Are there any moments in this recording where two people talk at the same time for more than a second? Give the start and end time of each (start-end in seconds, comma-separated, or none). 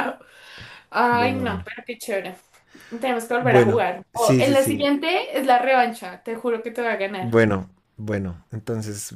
3.4-4.9